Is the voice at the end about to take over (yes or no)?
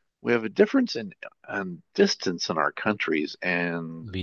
no